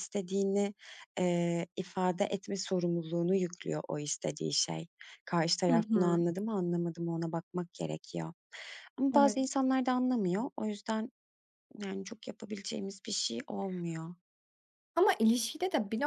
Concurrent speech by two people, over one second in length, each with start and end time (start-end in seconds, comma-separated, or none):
none